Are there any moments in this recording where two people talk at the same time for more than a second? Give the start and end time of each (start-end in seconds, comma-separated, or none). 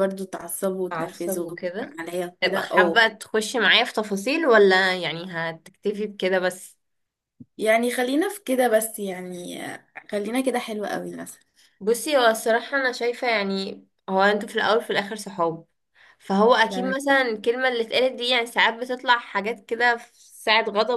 none